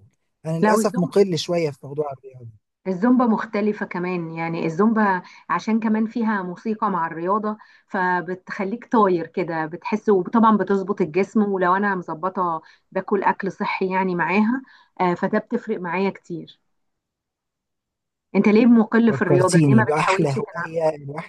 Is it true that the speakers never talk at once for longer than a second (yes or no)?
no